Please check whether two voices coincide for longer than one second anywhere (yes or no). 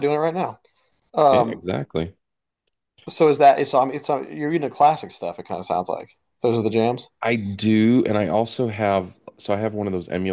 no